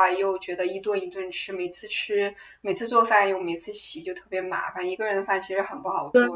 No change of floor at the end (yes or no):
no